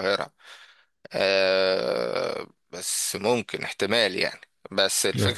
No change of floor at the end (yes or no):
yes